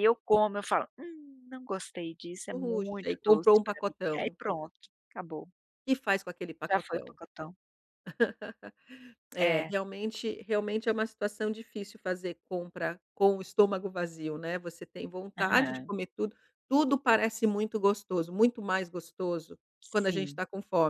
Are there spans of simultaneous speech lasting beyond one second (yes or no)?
yes